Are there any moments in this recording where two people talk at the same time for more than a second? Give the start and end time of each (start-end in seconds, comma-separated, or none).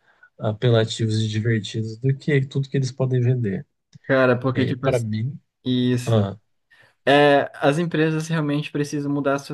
none